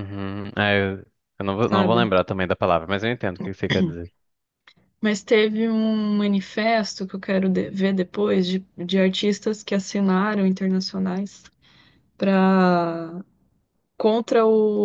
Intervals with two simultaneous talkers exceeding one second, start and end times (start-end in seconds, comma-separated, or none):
none